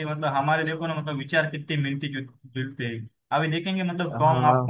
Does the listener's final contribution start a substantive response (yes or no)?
no